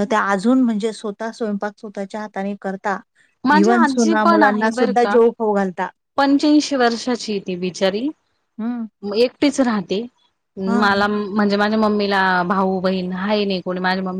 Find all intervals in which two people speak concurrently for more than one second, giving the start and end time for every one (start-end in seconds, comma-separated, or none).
3.6-5.2